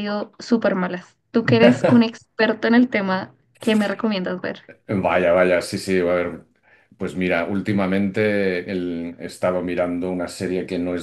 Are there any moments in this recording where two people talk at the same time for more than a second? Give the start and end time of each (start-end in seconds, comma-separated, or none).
none